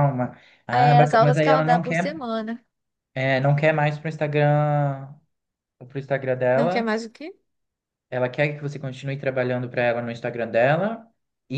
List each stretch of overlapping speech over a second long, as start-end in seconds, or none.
0.7-2.3